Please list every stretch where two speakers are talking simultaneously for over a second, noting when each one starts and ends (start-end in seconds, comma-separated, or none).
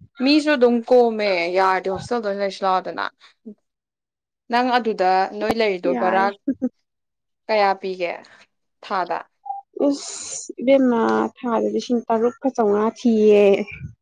none